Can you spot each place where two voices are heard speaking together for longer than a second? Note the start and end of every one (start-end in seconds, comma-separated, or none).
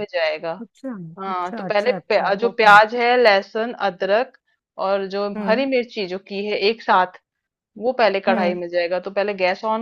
1.3-2.8